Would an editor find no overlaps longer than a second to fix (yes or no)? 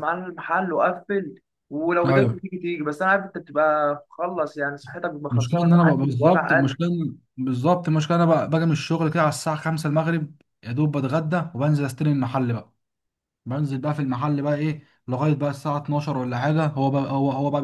no